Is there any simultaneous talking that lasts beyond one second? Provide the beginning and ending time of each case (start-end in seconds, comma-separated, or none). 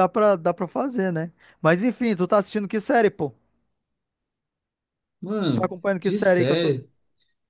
5.5-6.7